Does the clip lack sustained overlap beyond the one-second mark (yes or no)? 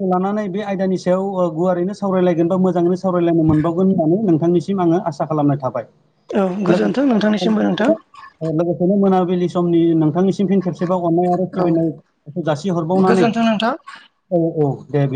no